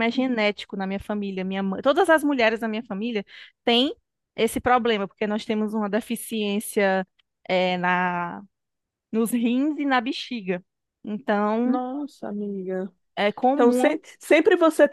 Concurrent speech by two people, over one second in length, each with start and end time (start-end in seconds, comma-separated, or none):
none